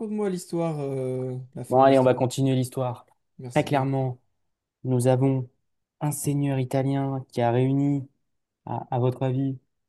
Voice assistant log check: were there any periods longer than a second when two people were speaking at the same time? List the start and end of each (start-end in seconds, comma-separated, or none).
none